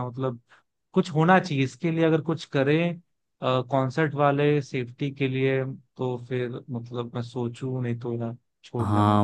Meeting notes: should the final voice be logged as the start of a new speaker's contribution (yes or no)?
yes